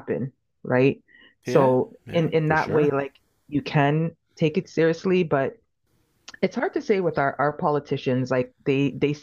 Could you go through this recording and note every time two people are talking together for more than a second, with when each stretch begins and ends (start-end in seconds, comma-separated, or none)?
1.4-3.0